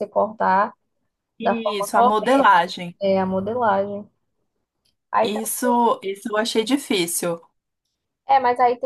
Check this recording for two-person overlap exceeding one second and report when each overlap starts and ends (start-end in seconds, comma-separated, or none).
1.4-2.6